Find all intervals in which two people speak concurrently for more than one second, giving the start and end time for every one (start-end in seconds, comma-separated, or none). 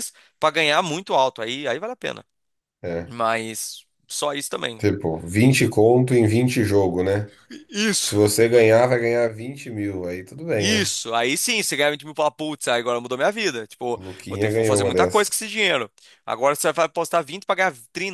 13.9-15.4